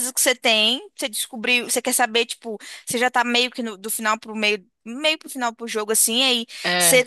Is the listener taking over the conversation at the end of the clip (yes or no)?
no